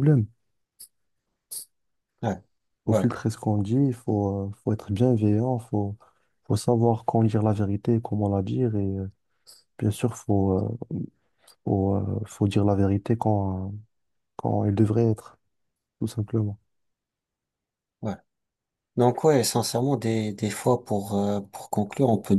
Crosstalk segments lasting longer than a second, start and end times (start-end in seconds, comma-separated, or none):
none